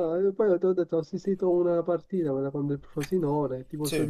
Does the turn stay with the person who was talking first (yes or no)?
yes